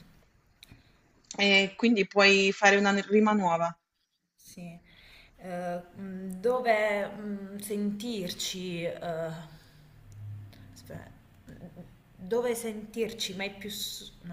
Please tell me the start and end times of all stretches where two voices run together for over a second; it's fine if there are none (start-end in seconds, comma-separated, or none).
none